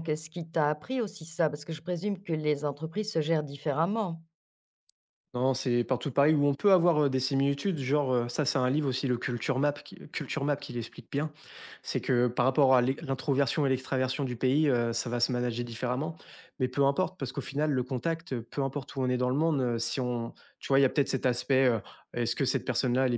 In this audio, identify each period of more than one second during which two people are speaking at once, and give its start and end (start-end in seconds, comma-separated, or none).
none